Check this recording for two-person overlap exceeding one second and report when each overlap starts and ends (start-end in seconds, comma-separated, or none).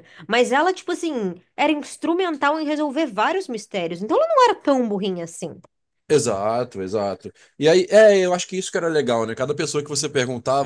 none